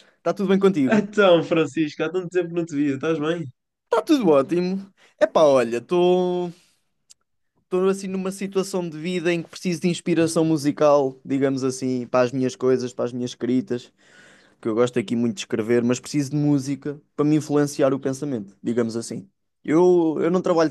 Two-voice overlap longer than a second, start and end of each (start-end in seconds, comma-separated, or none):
none